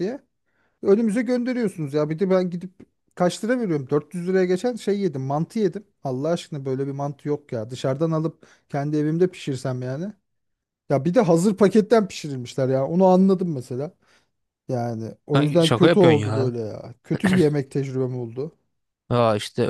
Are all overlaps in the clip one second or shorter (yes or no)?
no